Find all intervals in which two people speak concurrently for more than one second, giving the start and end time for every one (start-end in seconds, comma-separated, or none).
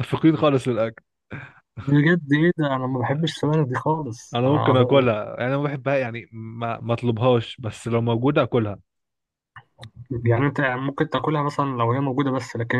none